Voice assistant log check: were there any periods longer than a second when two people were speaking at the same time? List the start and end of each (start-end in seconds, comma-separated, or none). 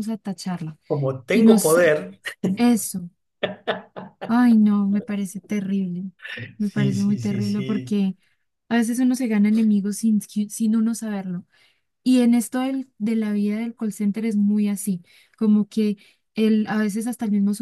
6.6-8.0